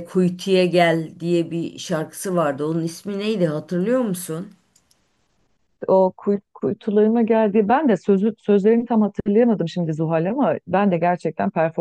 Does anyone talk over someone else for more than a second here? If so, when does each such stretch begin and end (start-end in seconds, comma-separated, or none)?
none